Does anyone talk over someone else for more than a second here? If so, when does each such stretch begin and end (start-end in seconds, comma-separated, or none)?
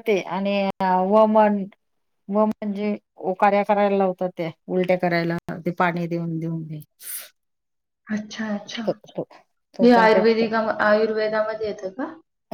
none